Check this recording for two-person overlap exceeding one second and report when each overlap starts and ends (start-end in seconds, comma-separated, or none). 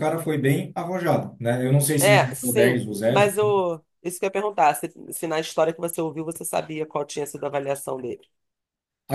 2.0-3.3